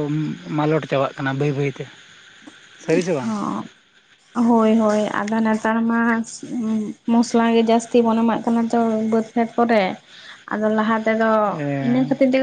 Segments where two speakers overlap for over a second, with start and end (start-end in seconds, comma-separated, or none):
none